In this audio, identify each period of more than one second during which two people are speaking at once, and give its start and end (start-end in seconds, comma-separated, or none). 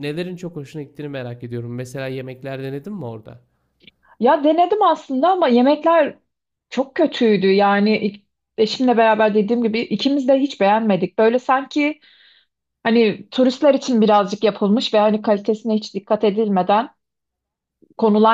none